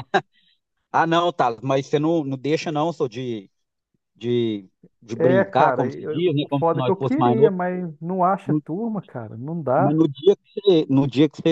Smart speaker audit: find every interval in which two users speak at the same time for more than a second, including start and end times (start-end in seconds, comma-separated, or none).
5.1-7.5